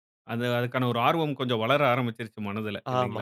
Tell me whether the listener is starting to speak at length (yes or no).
yes